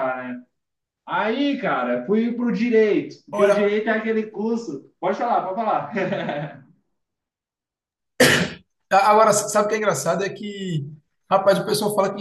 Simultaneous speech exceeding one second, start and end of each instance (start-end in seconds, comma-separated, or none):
none